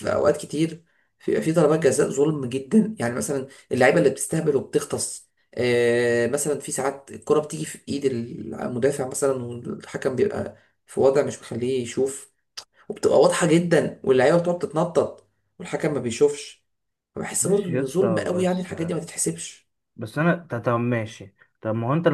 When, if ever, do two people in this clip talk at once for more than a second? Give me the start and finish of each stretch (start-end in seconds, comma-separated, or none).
17.4-18.7